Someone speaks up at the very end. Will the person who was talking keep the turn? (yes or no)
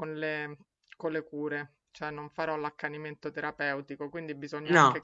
yes